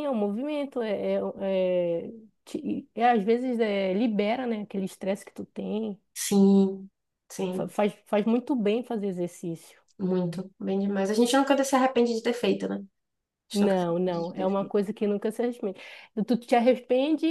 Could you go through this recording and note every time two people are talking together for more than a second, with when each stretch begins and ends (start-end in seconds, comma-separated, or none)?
13.5-14.8